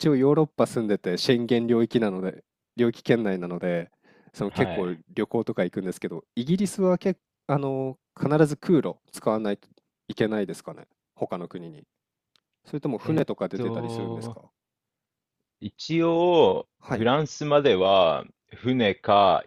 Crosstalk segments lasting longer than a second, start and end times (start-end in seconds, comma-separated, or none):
13.0-14.4